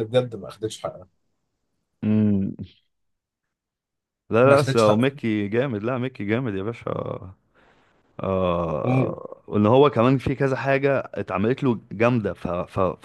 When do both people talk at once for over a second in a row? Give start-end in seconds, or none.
none